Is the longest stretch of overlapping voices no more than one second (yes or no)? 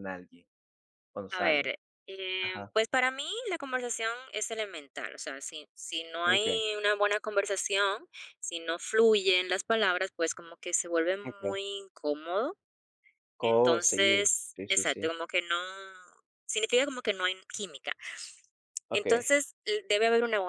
no